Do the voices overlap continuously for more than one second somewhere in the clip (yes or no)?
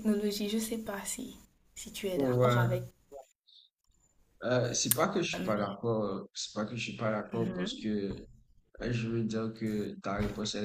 no